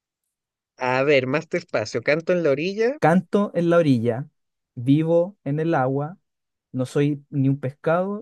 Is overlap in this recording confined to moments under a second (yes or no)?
yes